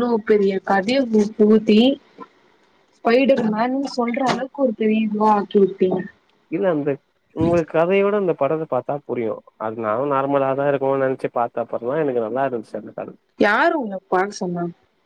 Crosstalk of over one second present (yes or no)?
no